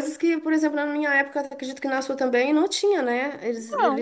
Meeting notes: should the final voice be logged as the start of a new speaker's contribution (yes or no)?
no